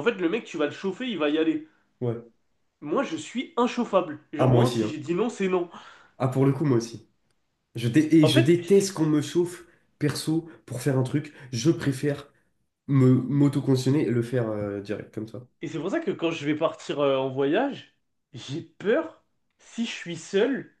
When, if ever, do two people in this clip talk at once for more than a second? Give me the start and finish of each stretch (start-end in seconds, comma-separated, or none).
none